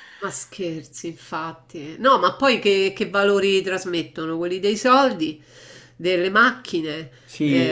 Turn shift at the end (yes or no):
yes